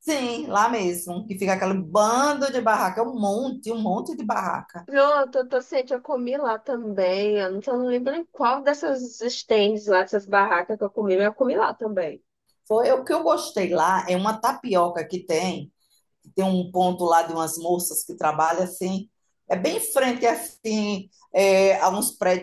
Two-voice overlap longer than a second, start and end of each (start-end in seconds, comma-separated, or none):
none